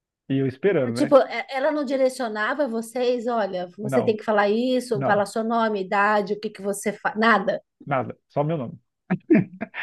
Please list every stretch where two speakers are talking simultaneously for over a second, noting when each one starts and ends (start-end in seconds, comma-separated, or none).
none